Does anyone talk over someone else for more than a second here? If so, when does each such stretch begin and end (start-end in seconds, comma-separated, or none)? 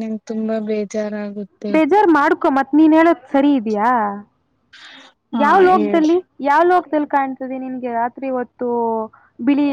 none